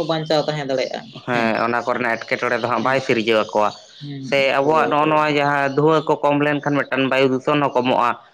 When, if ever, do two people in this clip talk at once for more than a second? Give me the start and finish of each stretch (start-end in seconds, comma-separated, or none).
none